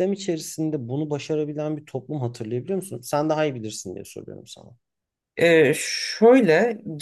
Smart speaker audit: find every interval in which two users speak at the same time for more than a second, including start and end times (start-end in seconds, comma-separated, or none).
none